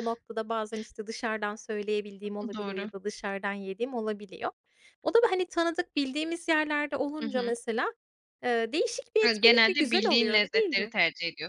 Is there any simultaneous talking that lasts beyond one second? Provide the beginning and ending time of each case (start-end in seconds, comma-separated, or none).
9.2-10.9